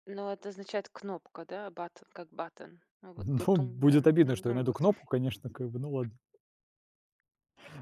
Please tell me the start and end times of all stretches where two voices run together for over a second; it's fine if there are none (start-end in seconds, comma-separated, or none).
3.2-4.8